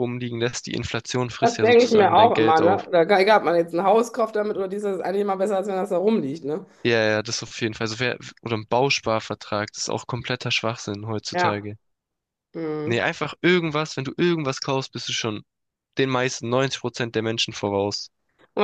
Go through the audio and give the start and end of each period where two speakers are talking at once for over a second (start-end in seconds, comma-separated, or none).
1.4-2.9